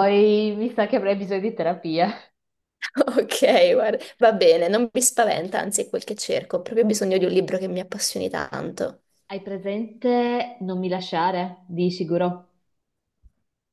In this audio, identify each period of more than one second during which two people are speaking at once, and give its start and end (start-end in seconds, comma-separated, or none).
none